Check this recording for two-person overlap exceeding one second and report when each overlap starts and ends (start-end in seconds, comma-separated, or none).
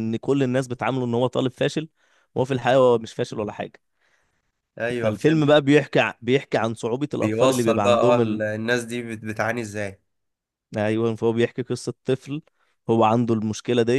7.1-8.4